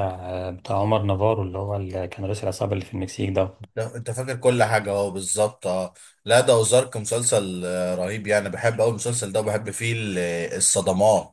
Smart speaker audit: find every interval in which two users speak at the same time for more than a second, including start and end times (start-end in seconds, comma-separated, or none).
none